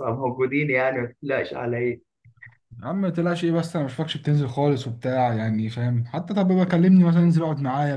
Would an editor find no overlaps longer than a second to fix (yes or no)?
yes